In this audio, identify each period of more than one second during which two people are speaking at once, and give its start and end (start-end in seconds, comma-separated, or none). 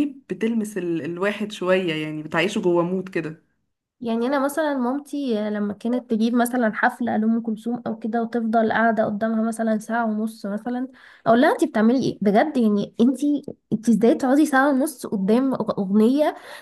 none